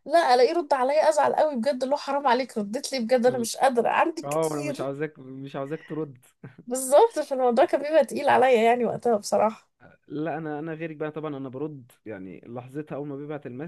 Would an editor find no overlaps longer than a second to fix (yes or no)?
yes